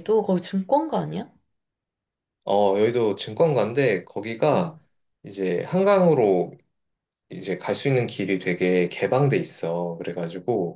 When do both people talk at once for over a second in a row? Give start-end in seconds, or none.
none